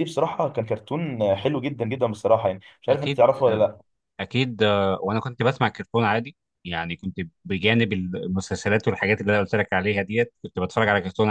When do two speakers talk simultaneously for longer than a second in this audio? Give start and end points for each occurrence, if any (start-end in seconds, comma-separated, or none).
none